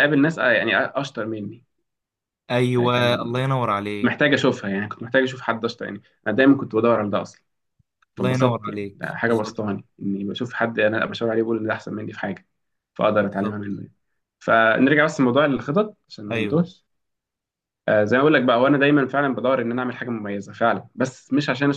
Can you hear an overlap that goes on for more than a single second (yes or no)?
yes